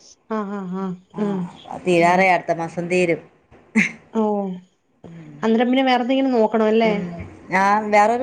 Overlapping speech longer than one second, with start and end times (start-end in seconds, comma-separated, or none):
none